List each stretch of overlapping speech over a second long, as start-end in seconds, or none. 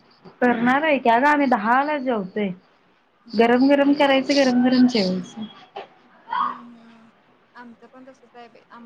none